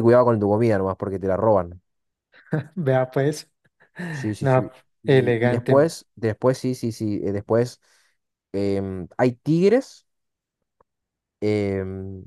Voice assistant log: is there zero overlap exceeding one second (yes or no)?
no